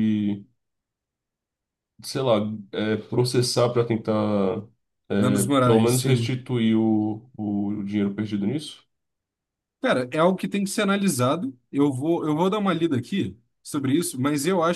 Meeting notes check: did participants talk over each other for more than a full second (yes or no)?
yes